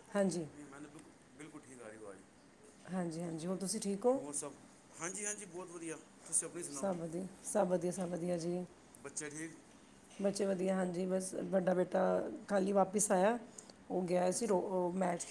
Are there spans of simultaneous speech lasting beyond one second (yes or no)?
no